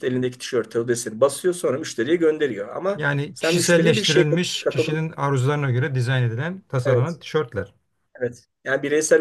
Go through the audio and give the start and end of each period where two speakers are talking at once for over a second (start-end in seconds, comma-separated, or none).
3.0-5.0